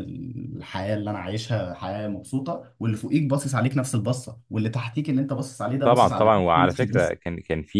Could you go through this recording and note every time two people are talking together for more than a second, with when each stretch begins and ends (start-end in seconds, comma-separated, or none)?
5.8-7.1